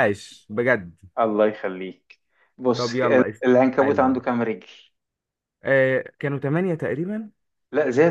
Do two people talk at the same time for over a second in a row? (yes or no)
yes